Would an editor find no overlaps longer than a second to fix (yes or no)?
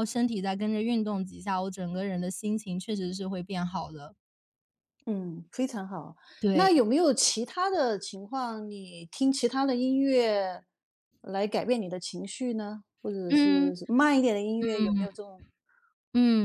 yes